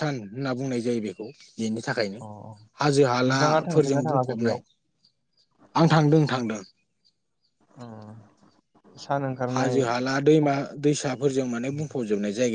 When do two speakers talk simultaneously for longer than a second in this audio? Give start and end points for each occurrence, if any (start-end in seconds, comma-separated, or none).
3.3-4.6